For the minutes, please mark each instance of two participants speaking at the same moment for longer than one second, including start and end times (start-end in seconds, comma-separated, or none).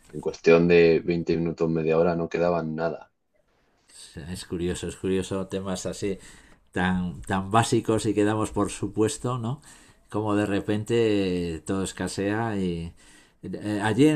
none